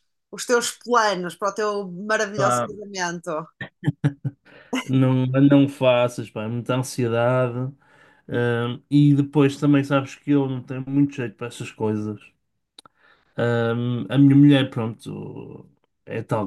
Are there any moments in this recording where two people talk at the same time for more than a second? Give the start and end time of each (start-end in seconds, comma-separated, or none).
none